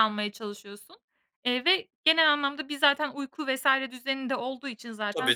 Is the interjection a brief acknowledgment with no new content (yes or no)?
no